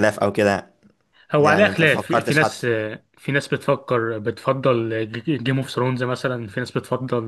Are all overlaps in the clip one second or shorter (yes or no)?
no